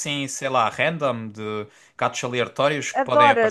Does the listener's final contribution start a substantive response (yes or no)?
yes